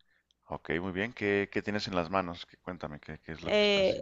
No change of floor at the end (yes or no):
no